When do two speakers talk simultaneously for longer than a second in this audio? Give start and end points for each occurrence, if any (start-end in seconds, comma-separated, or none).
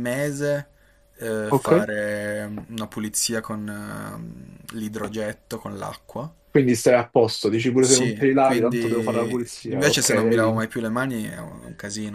7.8-10.7